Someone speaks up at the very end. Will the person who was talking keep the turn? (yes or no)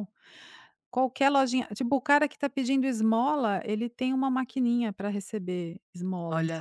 yes